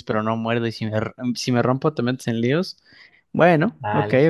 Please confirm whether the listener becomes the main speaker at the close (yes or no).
yes